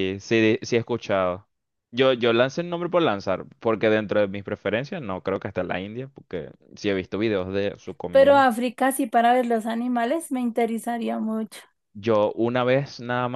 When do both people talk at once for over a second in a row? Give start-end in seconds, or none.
none